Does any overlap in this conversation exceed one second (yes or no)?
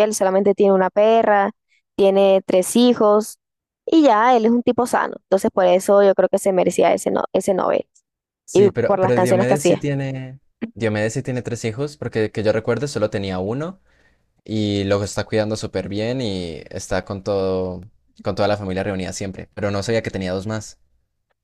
yes